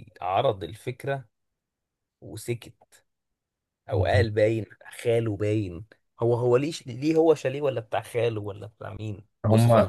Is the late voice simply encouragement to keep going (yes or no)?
no